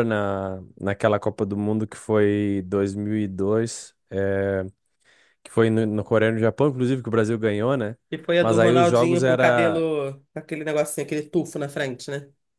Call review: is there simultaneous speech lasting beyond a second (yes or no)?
yes